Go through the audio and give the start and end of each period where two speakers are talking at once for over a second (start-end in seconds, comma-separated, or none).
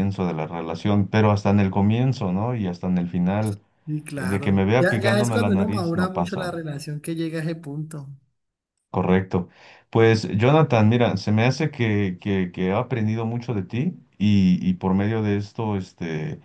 4.2-6.5